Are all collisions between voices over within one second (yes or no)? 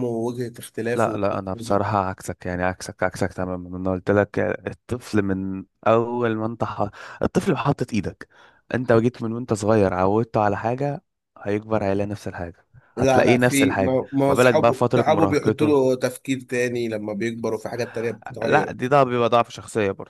no